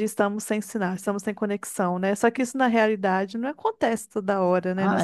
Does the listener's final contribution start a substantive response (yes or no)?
yes